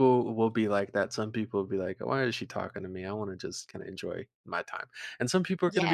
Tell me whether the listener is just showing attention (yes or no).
yes